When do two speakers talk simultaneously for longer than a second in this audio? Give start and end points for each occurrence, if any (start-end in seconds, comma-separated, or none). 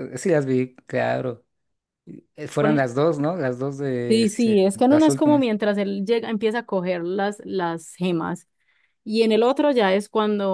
4.1-5.5